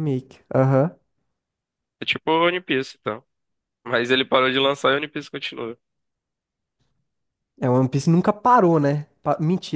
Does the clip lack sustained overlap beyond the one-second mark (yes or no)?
yes